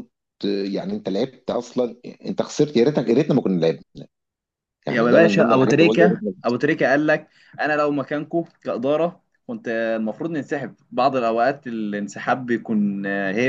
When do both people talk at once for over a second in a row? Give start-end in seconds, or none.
4.9-6.3